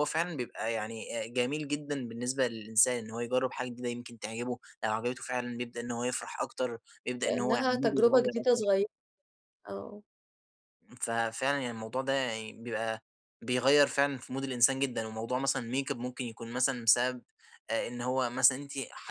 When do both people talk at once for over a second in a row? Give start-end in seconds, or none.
7.2-8.6